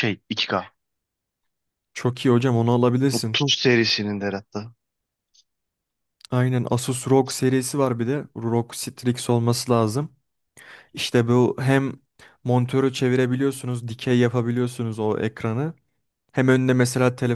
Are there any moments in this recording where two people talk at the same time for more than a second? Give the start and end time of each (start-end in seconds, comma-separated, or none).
none